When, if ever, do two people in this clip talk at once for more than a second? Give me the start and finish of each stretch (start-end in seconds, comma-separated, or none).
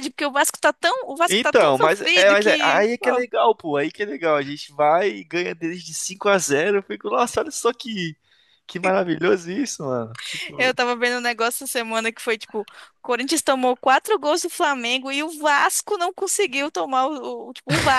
1.3-3.2